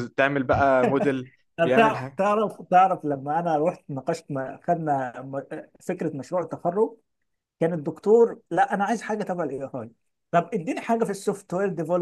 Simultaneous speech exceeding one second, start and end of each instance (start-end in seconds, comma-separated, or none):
none